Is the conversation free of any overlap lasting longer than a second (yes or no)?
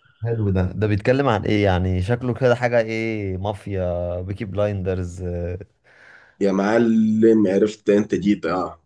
yes